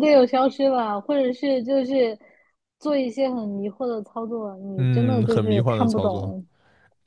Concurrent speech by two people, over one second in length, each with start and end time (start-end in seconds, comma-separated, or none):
4.8-6.3